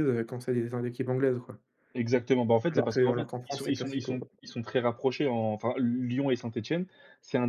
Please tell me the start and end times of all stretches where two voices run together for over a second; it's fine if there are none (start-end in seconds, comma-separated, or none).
2.7-4.3